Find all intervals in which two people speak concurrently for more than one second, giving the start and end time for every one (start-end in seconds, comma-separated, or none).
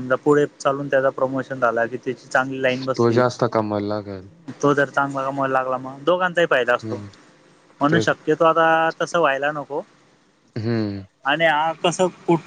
none